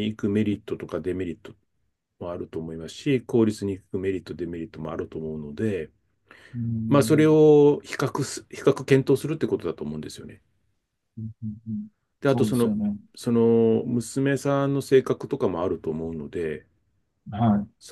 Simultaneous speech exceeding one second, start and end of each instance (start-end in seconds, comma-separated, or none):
none